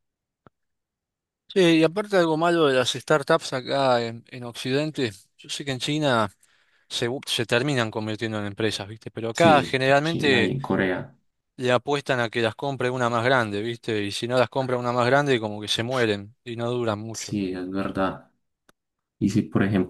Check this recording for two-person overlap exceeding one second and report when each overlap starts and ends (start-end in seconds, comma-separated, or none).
9.3-10.5